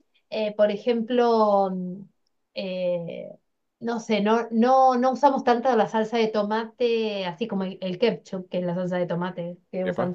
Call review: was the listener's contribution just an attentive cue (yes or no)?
yes